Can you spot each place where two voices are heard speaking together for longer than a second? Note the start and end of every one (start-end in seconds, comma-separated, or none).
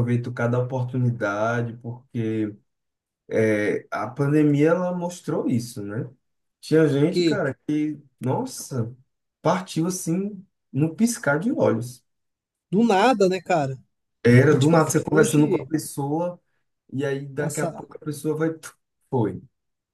14.5-15.7